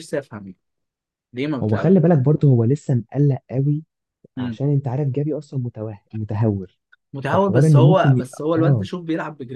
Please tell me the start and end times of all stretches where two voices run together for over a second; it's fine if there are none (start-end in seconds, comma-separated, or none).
7.3-8.9